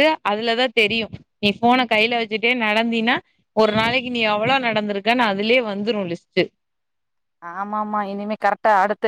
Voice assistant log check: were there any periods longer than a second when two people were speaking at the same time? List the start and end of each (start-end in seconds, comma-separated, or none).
none